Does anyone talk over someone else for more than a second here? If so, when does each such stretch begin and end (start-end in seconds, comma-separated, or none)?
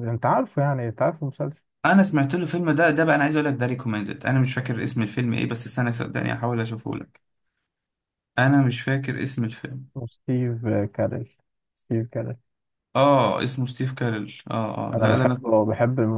none